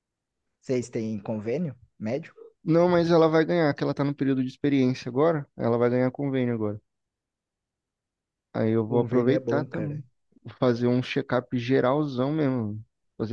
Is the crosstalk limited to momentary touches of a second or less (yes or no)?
no